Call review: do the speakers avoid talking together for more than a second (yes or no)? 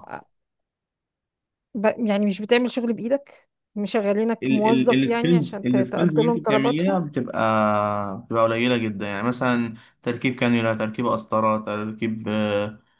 no